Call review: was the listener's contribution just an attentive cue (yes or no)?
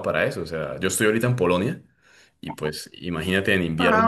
yes